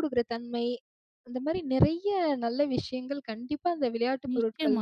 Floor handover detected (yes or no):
yes